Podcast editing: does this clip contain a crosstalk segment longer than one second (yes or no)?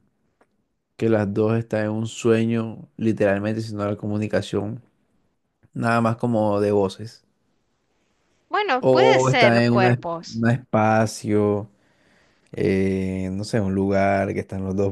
yes